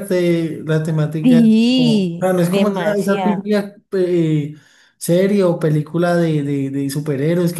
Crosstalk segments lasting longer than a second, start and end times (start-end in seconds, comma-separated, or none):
1.2-3.5